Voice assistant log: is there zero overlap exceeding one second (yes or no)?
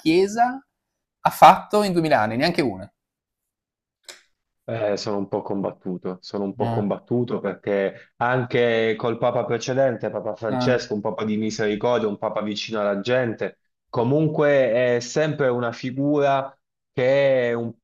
yes